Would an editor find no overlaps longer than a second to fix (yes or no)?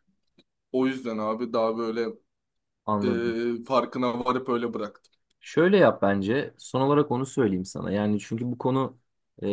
yes